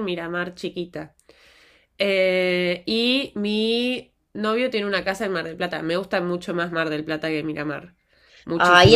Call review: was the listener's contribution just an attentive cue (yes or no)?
no